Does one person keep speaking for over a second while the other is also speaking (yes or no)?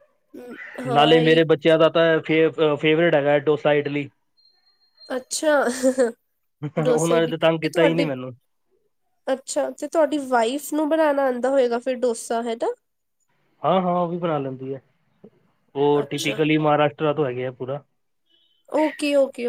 yes